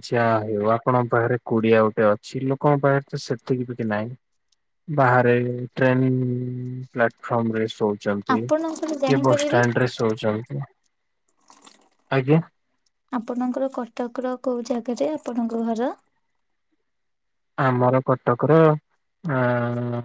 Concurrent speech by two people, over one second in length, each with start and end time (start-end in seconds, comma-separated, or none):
8.3-9.6